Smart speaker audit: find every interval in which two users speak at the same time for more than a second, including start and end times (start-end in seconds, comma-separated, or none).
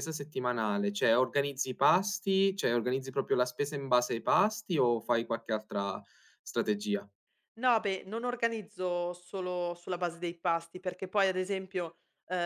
none